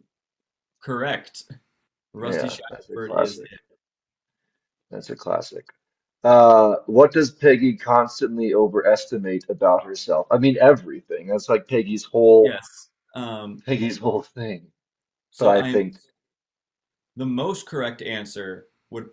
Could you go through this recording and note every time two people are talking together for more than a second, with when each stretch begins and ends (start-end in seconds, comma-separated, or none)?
2.2-3.5